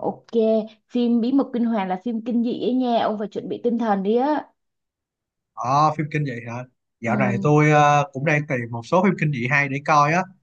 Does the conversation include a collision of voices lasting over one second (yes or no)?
no